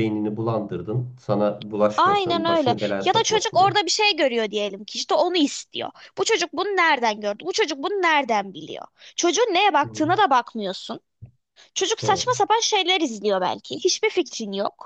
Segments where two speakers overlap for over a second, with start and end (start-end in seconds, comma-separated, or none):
2.0-3.8